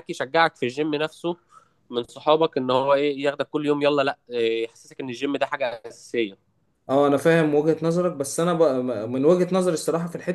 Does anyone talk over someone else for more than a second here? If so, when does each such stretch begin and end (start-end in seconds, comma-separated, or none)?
none